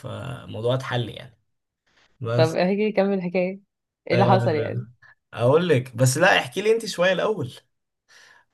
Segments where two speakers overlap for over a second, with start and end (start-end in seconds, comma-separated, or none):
none